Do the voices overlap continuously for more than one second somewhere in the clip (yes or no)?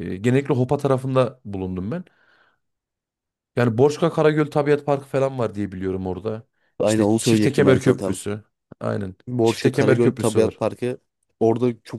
yes